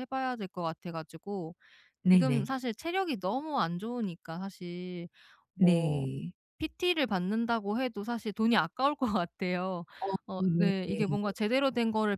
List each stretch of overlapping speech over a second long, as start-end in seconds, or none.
none